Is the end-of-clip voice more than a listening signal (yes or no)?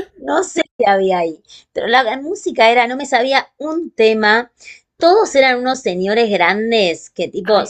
no